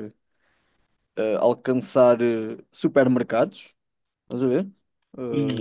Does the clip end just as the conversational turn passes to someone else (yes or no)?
no